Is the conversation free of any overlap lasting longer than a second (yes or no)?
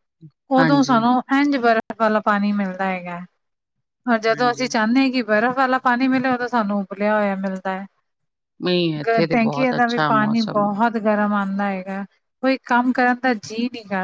no